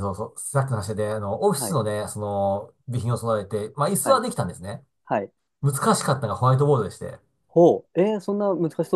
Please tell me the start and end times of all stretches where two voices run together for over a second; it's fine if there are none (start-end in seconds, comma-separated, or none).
none